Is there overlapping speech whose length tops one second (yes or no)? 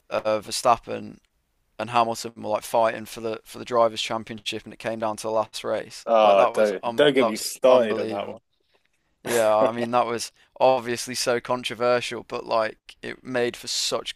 yes